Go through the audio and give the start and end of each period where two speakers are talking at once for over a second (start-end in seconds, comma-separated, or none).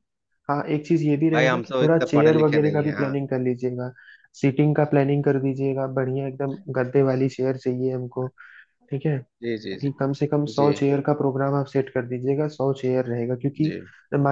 1.3-3.1